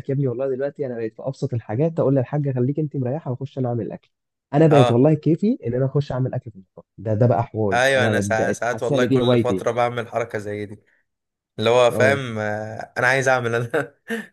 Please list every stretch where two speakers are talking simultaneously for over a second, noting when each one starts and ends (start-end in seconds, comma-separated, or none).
7.7-9.6